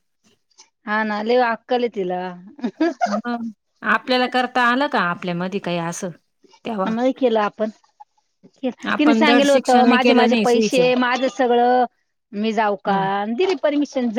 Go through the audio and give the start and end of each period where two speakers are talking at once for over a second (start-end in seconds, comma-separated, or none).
9.0-10.8